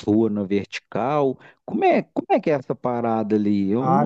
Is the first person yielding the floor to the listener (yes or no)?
yes